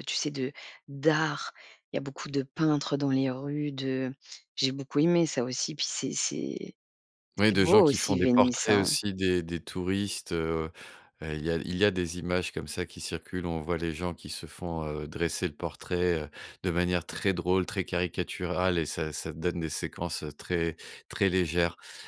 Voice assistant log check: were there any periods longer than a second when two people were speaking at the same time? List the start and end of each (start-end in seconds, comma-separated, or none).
7.5-8.9